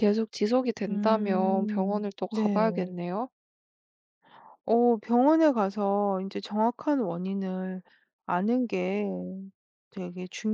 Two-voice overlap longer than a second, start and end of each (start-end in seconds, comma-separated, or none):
0.9-2.7